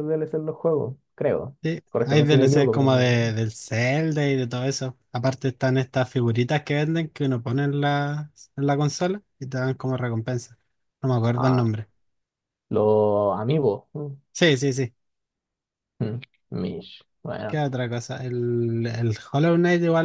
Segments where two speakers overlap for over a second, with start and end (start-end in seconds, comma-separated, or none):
1.6-3.3